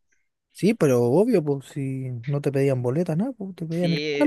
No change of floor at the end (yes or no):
no